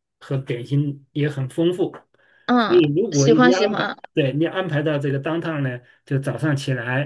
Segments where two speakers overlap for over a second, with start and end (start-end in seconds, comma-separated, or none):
2.6-4.0